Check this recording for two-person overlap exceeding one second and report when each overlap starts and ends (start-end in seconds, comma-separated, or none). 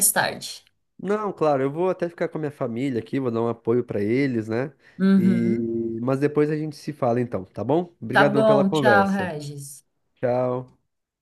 8.1-9.3